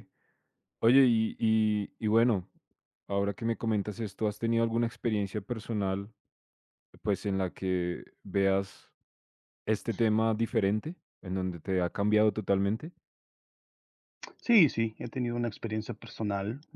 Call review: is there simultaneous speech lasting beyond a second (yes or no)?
no